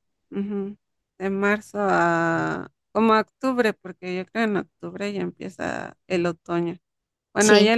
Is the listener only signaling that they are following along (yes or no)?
yes